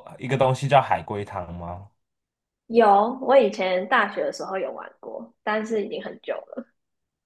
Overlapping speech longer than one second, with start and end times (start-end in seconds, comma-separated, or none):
none